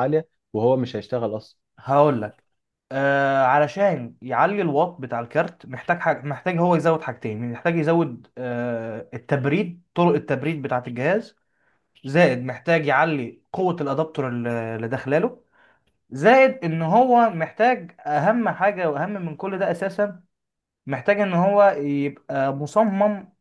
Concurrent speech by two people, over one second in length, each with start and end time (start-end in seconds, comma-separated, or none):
none